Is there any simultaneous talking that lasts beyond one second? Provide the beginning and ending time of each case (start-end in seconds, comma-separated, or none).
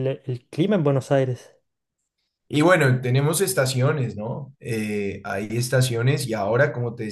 none